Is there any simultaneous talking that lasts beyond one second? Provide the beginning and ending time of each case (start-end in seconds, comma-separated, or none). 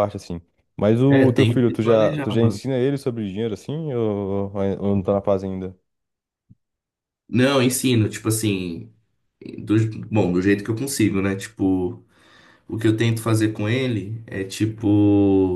1.1-2.6